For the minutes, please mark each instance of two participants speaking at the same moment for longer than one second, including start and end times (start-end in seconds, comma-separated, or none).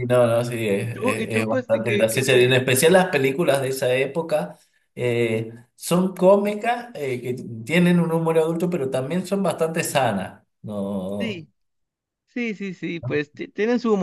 0.8-2.6